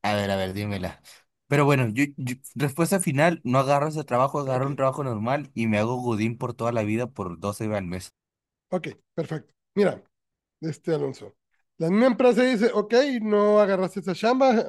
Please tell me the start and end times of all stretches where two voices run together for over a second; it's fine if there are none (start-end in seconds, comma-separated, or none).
none